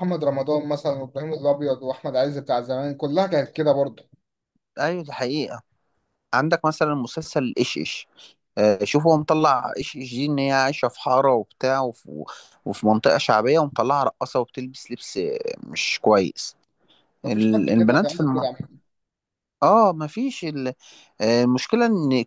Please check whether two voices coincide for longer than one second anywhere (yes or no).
yes